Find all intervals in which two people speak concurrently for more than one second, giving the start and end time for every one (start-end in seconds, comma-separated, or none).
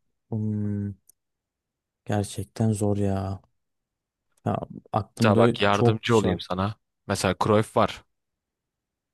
5.2-6.4